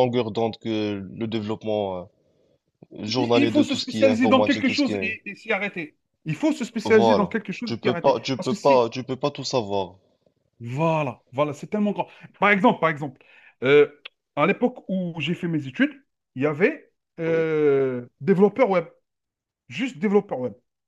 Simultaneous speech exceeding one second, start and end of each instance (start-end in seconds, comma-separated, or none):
3.2-5.1, 6.8-8.9